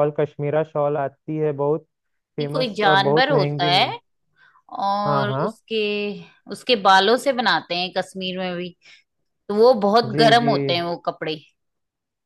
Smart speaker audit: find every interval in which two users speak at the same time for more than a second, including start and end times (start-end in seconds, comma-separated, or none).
2.4-4.0